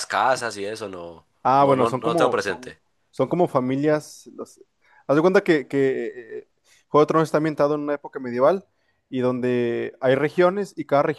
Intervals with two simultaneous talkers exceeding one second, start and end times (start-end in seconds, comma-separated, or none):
1.4-2.8